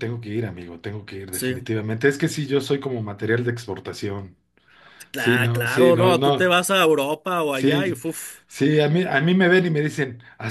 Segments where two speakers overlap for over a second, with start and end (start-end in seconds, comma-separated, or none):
5.1-6.5